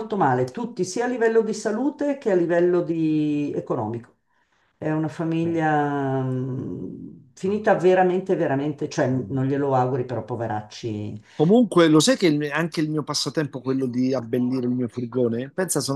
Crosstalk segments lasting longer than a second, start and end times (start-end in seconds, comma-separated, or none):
none